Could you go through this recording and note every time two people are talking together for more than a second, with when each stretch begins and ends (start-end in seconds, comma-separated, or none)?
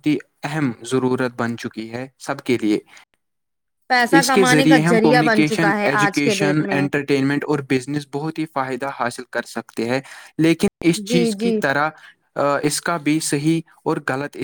4.2-6.9